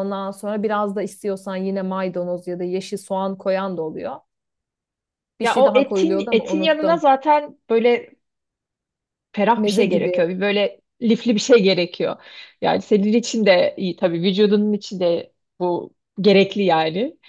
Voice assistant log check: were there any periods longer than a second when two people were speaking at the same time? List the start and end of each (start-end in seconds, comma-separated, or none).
5.4-7.0